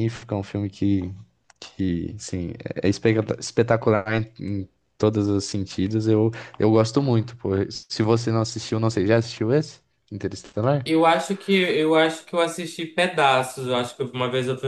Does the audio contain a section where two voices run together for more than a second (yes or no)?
no